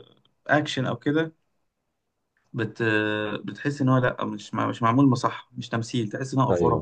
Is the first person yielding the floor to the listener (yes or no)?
yes